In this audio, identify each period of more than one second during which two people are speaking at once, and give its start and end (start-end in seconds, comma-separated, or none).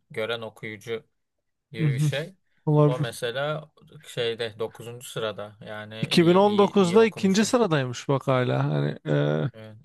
6.0-7.5